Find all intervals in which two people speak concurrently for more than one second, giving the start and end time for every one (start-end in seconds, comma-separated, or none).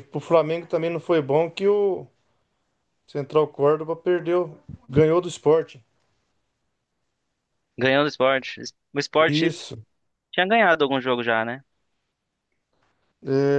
none